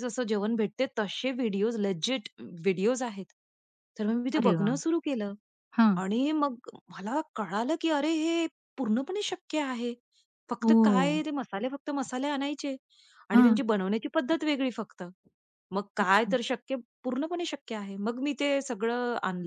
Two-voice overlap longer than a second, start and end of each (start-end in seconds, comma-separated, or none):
none